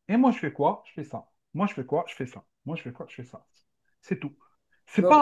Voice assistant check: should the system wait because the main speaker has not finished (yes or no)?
yes